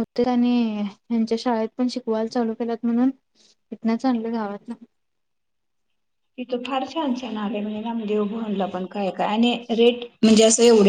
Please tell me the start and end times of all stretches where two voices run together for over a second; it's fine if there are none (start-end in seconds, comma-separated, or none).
none